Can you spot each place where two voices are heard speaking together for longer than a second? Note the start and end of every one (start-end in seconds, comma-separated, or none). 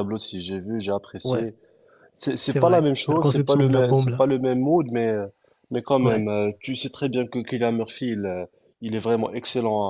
2.4-4.3